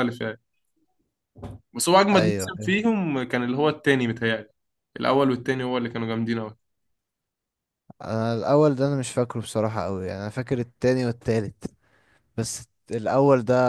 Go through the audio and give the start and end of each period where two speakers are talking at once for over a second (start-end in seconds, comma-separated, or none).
none